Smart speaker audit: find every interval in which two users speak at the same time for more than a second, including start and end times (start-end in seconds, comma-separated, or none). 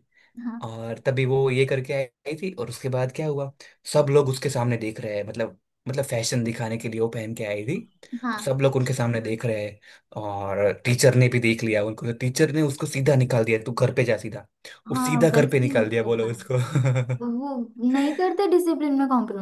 14.9-16.3